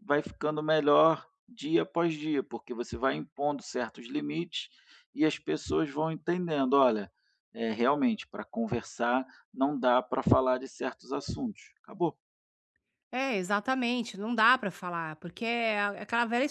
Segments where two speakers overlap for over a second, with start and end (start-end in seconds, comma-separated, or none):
none